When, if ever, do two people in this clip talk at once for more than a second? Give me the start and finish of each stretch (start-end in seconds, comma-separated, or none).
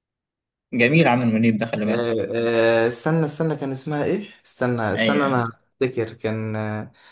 none